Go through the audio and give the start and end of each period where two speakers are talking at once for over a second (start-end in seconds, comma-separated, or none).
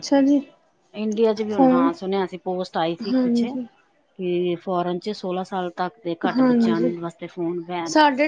none